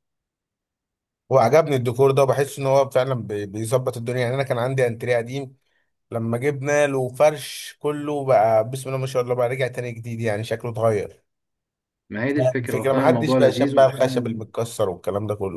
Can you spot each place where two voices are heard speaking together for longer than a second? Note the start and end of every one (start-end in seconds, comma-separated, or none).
12.6-14.2